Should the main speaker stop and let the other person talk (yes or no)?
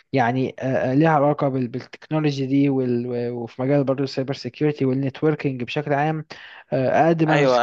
yes